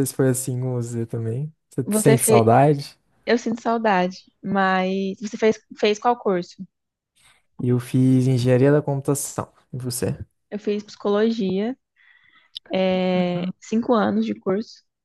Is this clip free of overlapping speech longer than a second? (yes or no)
yes